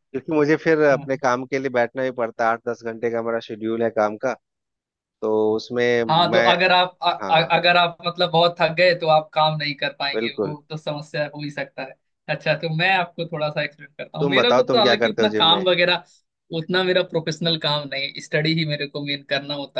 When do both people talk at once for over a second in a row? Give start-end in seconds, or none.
14.2-15.6